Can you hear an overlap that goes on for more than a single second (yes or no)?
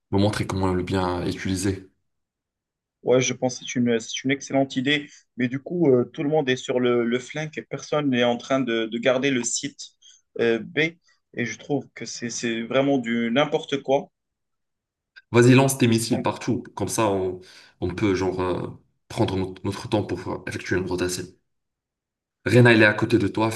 no